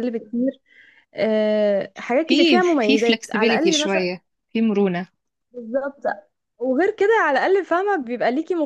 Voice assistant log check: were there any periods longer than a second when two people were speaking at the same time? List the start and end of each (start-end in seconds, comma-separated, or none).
2.3-4.1